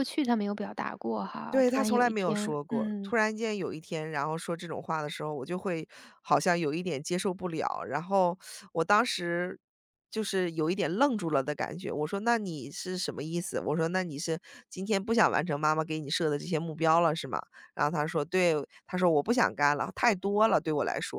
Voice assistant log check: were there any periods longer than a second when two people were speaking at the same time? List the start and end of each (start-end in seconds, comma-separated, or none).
1.5-3.1